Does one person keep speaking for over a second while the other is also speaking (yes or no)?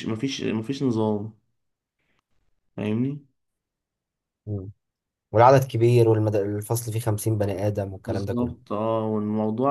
no